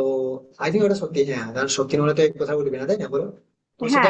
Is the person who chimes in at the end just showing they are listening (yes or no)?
no